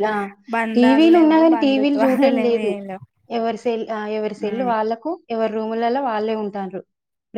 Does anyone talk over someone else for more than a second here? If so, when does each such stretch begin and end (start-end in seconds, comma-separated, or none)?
0.8-2.7